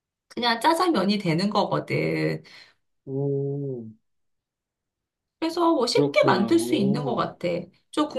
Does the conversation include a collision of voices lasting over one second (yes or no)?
yes